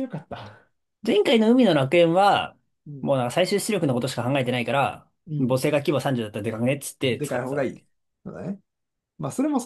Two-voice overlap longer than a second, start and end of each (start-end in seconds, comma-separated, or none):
none